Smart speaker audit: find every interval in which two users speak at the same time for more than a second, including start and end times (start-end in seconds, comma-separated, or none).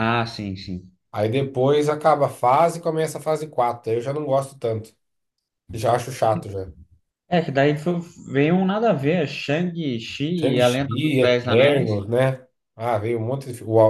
10.4-12.0